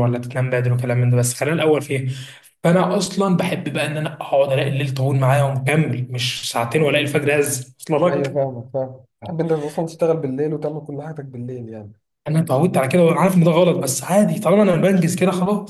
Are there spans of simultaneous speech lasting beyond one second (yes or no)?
no